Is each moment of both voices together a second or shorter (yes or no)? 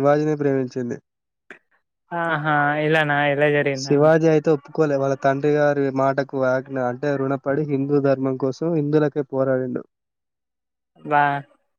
yes